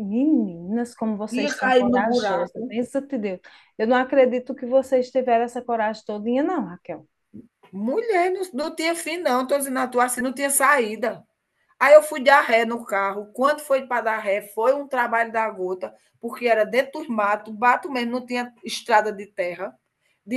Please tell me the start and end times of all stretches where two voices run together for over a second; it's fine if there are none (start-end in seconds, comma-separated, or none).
1.4-2.7